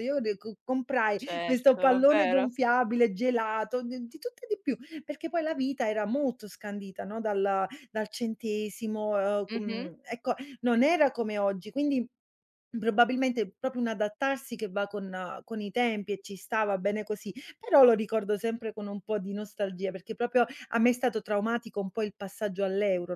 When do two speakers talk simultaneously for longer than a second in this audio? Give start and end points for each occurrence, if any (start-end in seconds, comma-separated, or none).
1.1-2.5